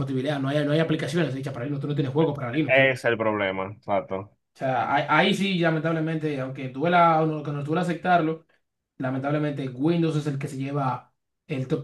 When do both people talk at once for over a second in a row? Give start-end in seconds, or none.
none